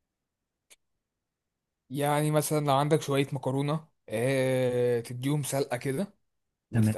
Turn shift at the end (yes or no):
no